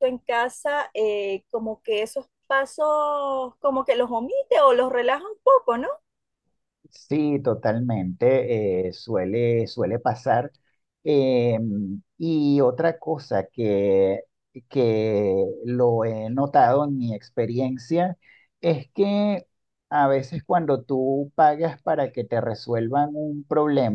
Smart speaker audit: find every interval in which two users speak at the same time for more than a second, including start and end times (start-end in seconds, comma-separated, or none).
none